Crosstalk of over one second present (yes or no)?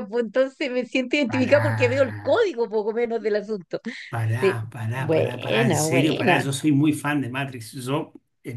yes